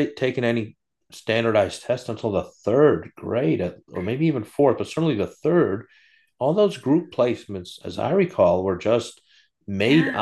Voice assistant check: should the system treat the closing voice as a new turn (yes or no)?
no